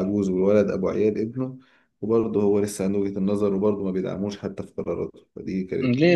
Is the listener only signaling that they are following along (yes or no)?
no